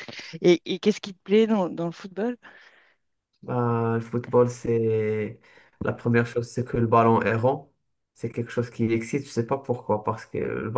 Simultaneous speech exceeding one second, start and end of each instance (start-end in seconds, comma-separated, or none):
none